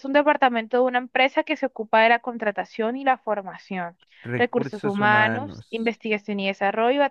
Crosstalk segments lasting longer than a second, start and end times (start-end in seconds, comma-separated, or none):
4.4-6.0